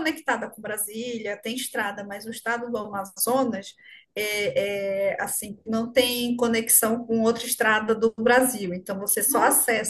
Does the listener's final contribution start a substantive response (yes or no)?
no